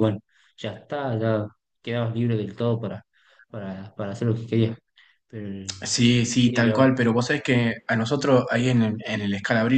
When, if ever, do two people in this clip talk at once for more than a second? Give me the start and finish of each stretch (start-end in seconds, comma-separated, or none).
none